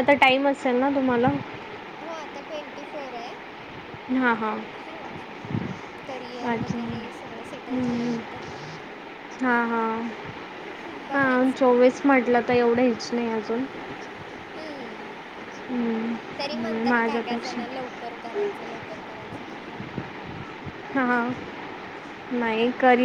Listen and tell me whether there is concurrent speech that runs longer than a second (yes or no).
yes